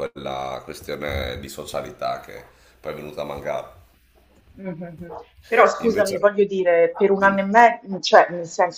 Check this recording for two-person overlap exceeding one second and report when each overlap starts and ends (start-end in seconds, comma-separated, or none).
none